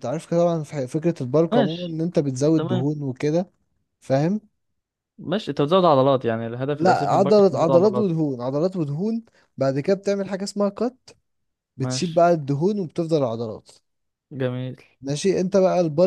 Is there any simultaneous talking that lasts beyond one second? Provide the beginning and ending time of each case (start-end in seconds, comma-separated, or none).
6.8-8.1